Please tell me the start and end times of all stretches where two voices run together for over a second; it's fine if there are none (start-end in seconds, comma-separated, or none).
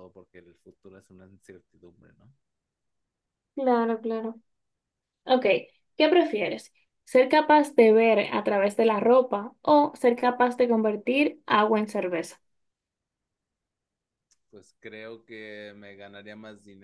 none